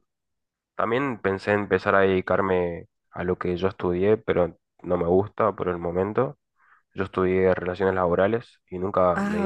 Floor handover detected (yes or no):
no